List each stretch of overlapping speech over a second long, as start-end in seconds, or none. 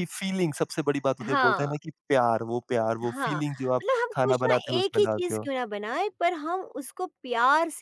3.0-5.5